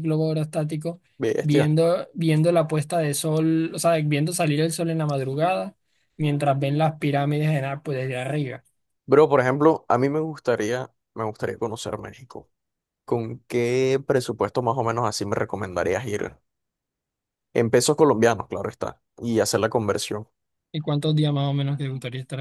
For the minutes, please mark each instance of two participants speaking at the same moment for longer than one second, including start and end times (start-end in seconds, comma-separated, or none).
none